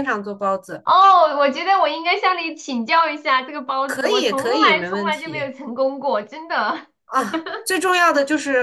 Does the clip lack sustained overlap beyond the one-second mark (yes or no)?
no